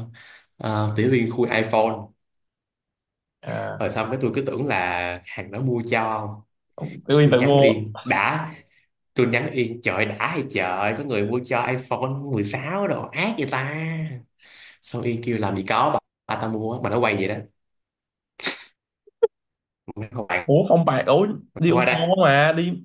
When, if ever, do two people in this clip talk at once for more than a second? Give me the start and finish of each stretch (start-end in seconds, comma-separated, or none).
none